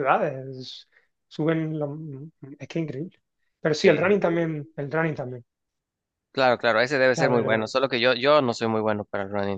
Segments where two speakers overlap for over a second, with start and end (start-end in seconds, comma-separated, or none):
none